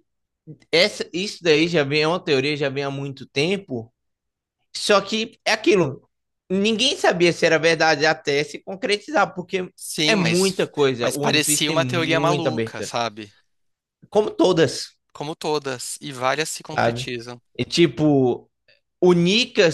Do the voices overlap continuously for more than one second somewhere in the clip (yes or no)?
yes